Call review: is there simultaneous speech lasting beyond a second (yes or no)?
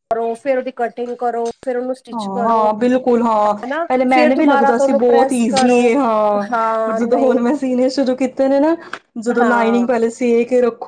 yes